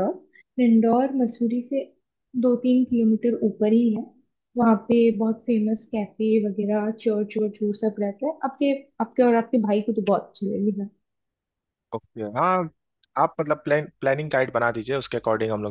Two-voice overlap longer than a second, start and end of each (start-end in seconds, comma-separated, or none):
none